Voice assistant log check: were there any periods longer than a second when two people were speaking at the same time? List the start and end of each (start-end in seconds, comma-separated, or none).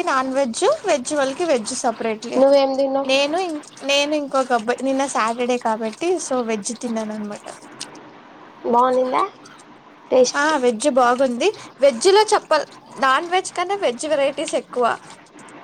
none